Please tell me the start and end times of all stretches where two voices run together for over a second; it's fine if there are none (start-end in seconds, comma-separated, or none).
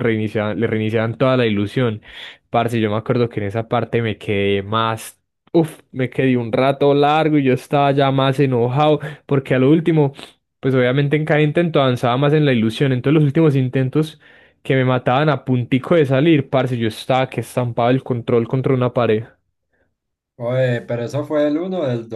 none